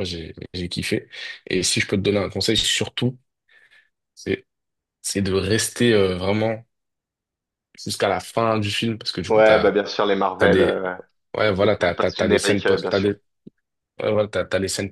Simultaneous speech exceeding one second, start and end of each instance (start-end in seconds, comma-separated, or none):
11.8-13.1